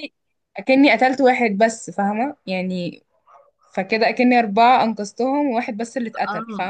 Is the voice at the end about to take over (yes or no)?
yes